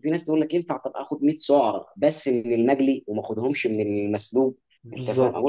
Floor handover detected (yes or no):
no